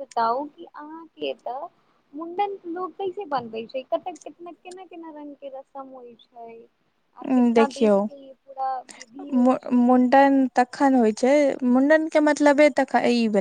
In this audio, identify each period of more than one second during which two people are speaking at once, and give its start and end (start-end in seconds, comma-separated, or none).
none